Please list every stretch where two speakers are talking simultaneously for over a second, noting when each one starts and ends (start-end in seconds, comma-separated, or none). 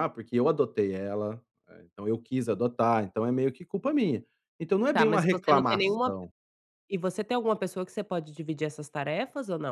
4.9-6.3